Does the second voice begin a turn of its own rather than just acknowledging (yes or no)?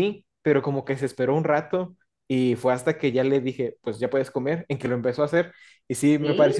no